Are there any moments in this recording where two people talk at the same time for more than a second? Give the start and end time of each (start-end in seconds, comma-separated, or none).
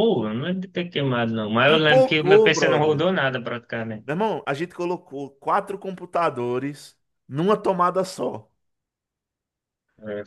1.6-3.0